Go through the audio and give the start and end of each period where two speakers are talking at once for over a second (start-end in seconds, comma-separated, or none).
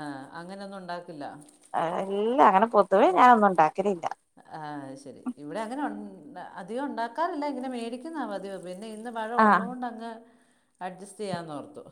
none